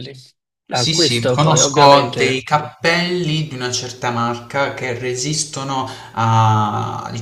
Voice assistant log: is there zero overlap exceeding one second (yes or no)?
no